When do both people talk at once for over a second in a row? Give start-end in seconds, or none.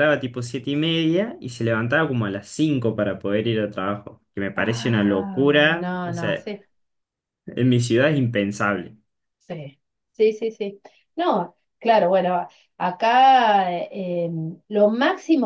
4.6-6.5